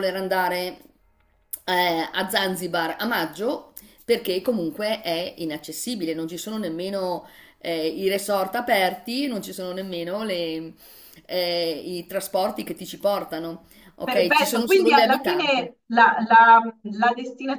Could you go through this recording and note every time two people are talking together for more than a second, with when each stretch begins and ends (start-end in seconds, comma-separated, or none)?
14.0-15.7